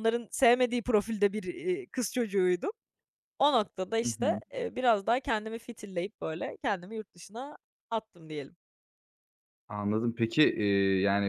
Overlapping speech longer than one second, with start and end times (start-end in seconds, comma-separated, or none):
none